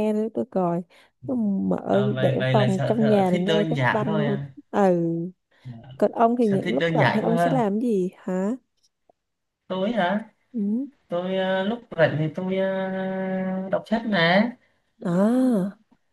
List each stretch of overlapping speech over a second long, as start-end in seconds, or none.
1.9-4.5, 6.4-7.6